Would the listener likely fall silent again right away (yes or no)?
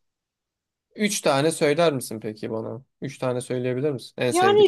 no